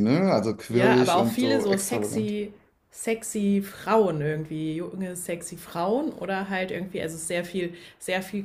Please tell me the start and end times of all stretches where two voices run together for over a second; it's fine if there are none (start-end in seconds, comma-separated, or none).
0.7-2.3